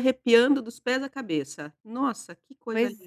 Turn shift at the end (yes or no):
yes